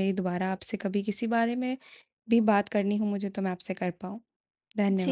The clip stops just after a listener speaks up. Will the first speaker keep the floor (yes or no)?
no